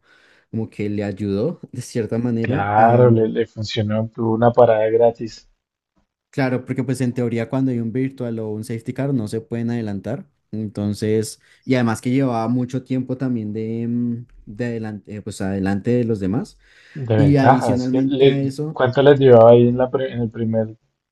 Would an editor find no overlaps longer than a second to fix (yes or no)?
no